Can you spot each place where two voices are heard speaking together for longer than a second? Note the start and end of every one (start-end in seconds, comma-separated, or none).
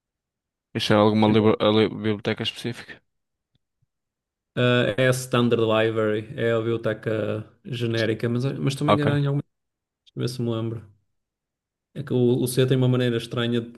none